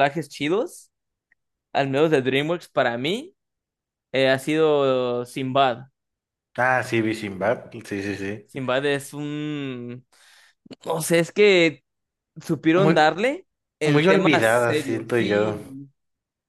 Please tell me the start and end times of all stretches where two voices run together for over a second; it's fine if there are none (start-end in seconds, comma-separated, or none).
13.8-15.6